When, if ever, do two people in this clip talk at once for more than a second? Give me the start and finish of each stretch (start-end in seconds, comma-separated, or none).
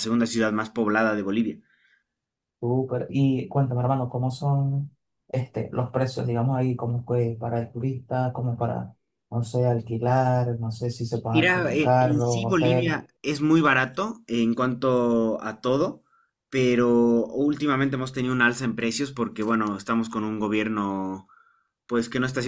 11.3-13.0